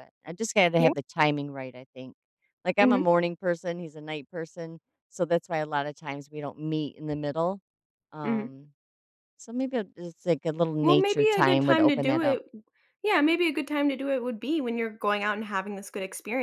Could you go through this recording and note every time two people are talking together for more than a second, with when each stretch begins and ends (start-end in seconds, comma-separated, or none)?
10.8-12.4